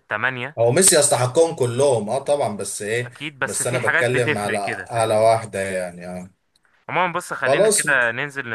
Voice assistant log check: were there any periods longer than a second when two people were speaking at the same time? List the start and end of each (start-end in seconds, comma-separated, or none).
3.0-5.3